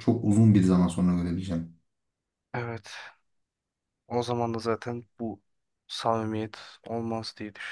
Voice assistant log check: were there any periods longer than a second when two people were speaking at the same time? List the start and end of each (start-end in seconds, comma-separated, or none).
none